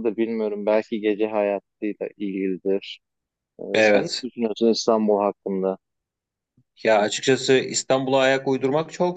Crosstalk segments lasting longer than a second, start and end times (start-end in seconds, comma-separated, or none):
none